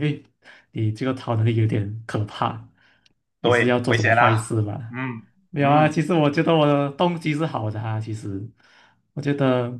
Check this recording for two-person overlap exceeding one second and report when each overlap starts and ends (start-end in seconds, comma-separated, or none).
3.4-5.0